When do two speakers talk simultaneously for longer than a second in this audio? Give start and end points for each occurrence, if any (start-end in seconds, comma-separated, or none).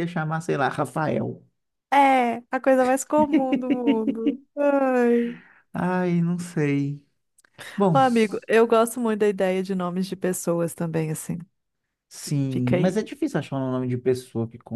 none